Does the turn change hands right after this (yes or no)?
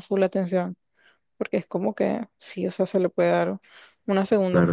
yes